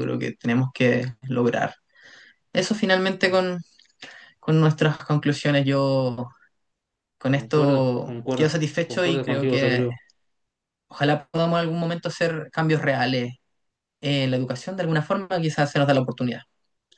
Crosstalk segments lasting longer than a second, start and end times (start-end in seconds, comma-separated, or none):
7.3-9.8